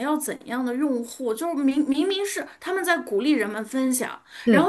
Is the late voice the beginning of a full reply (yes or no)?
no